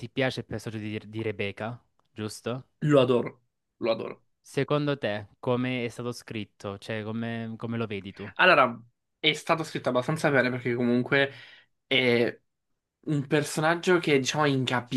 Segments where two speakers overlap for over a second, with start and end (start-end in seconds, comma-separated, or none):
none